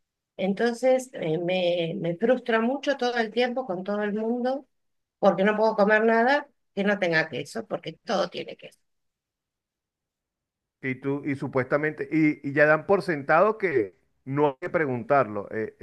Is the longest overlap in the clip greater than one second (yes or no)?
no